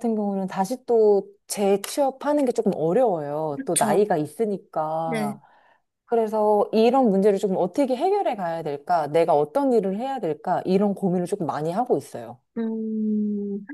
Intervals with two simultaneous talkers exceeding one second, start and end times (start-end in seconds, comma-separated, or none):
none